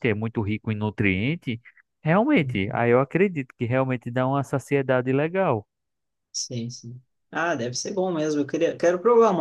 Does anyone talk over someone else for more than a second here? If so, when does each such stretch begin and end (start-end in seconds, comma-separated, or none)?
none